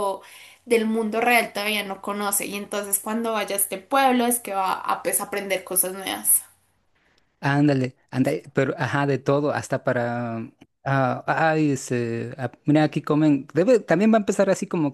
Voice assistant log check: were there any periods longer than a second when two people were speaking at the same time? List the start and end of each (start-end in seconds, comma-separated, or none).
none